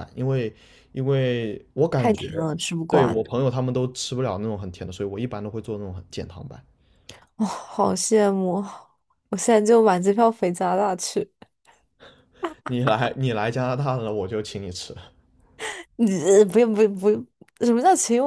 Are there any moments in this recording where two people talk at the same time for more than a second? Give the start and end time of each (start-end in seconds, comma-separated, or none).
none